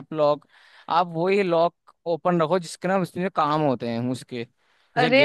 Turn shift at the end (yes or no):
yes